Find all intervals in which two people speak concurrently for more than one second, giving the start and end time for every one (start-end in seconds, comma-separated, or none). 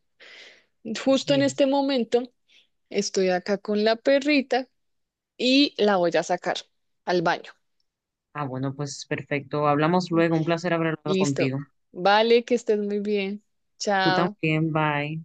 none